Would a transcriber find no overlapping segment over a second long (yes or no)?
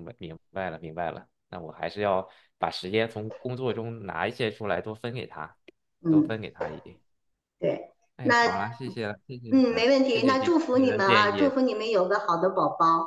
no